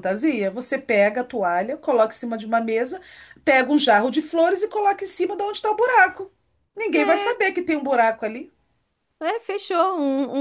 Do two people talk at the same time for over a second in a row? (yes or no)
no